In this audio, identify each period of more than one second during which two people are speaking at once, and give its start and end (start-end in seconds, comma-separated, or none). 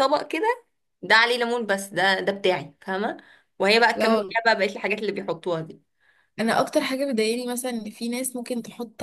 none